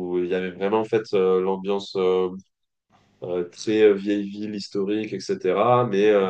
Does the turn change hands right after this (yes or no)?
no